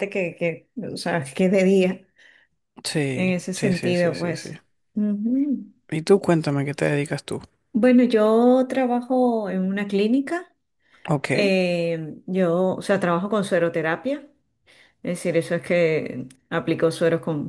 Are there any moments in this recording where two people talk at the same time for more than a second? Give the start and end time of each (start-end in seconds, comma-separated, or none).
3.1-4.5